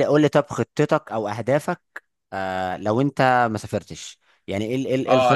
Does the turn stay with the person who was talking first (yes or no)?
no